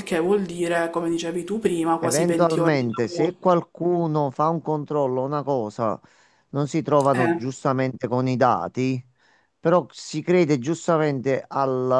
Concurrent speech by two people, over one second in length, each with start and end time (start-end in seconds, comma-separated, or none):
2.0-3.4